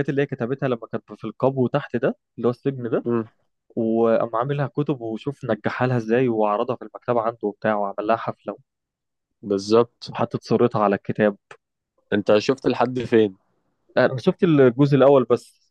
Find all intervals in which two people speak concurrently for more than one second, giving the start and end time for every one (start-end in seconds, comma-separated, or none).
none